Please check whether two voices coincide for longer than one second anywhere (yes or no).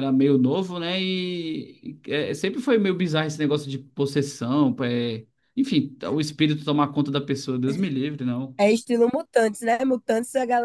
no